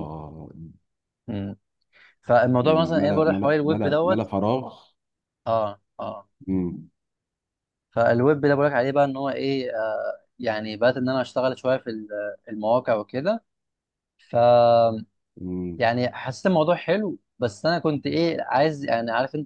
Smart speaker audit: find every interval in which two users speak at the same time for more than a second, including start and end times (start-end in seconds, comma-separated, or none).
2.6-4.3